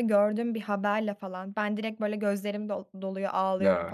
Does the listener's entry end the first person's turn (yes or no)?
no